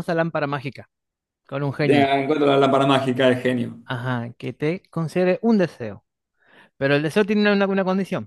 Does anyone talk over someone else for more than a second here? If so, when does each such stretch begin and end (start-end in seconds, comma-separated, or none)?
none